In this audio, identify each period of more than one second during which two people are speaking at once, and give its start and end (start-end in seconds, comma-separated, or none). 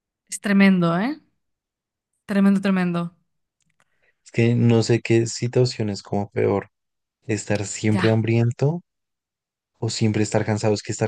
none